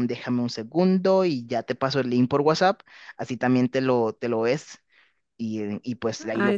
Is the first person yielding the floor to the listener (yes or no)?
yes